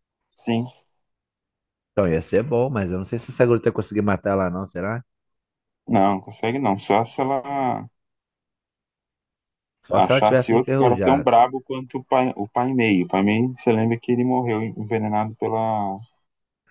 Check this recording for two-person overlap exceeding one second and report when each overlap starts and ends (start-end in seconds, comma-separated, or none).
9.9-11.3